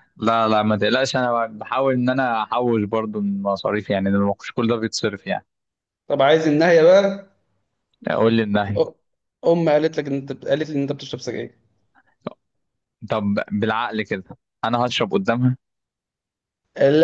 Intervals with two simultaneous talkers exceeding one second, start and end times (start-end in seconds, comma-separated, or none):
none